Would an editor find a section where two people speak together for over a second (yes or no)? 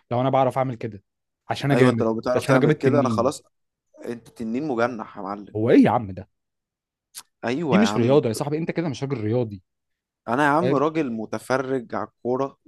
yes